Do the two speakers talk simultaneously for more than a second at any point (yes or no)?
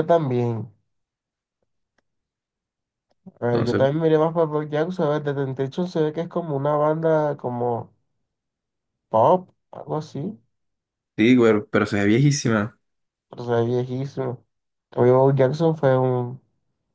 no